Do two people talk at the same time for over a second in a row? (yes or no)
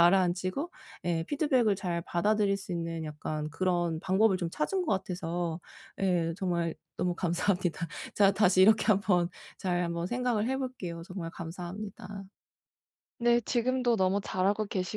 no